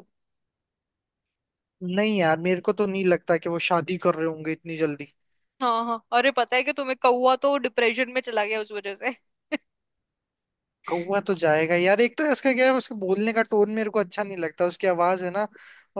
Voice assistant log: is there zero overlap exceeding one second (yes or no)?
yes